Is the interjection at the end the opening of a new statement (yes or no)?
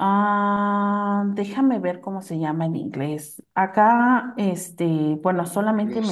yes